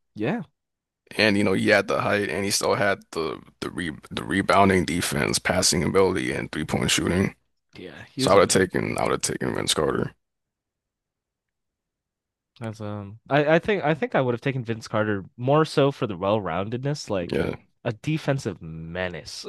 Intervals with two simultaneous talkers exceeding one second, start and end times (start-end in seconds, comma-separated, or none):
none